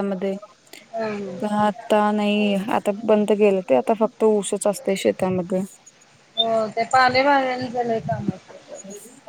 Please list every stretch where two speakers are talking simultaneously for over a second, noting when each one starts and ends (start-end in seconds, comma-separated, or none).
none